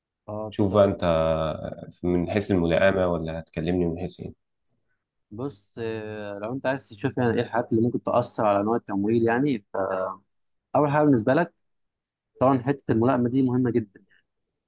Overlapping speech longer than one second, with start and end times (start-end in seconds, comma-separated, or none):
none